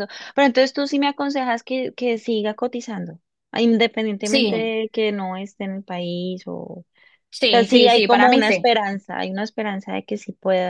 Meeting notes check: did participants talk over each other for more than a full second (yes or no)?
yes